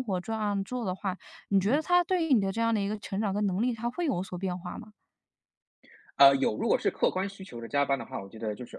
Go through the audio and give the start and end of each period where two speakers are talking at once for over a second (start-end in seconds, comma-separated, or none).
none